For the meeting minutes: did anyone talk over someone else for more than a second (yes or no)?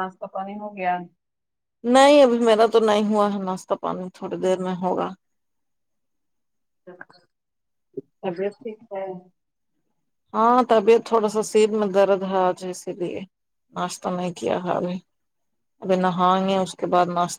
no